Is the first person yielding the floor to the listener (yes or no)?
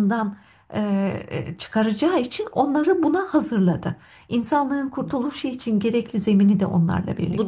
yes